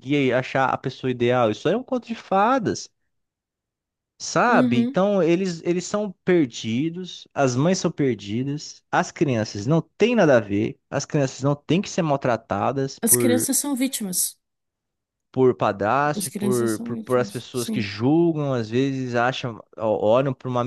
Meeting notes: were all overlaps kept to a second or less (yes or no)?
no